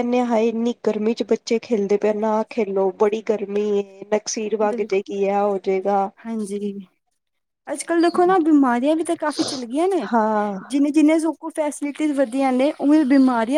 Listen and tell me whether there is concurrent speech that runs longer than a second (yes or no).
no